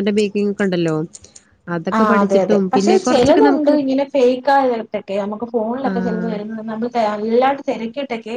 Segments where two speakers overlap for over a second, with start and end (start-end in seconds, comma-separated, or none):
1.9-3.7